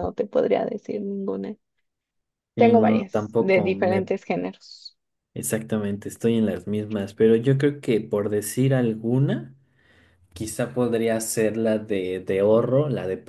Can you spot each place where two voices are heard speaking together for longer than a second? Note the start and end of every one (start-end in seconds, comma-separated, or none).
2.5-4.1